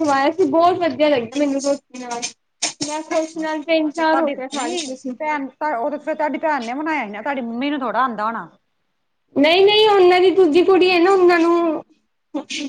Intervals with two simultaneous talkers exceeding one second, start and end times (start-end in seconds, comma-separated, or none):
3.4-5.2